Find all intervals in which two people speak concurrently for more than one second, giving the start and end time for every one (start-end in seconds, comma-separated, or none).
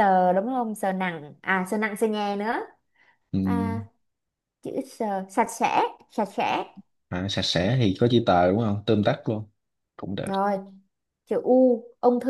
none